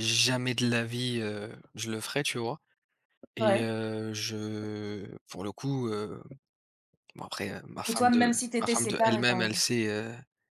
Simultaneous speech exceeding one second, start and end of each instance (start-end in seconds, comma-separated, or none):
7.9-9.6